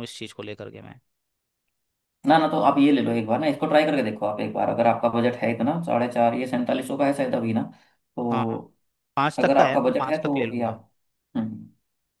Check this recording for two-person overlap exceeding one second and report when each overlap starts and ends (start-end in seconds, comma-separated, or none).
9.4-10.8